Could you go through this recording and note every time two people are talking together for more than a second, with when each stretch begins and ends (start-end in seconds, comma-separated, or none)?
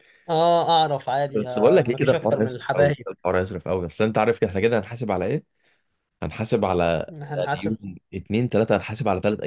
1.3-3.1